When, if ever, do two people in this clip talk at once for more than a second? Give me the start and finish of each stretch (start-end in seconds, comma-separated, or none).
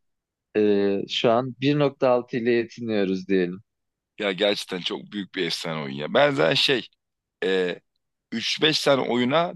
none